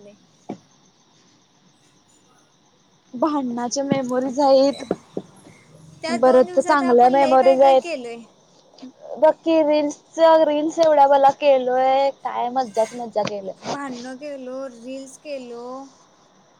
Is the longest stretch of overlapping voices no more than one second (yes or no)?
no